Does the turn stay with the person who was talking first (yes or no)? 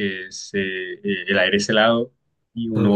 yes